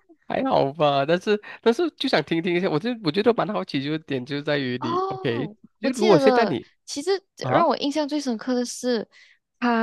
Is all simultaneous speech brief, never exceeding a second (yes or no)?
no